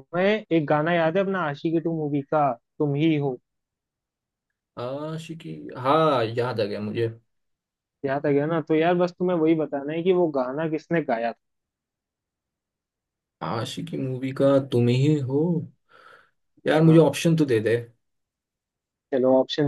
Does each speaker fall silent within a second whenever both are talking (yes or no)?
yes